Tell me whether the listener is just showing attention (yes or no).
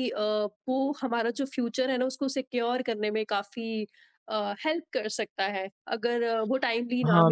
no